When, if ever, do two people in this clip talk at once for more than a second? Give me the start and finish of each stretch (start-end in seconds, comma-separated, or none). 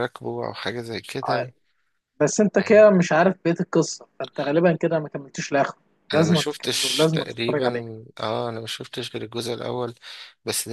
6.1-7.7